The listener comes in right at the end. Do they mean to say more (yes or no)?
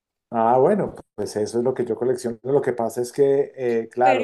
yes